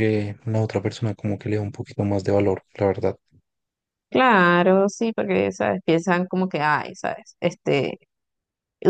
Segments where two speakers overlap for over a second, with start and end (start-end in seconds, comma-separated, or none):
none